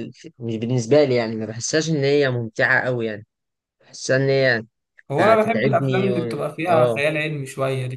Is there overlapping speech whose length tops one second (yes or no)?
yes